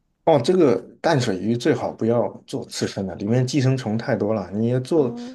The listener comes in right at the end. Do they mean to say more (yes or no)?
no